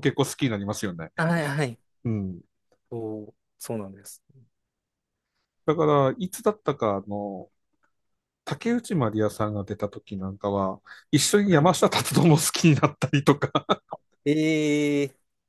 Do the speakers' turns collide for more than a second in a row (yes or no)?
no